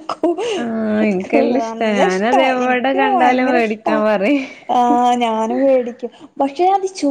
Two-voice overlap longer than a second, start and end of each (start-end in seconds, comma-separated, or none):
1.6-3.9